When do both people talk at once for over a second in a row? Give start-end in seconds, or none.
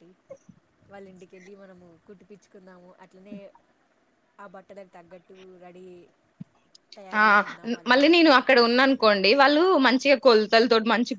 none